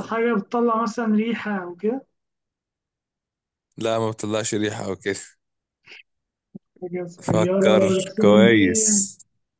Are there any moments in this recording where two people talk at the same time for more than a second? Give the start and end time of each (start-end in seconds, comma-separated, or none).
7.2-9.1